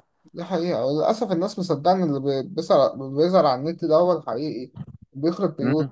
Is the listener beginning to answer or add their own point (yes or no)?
no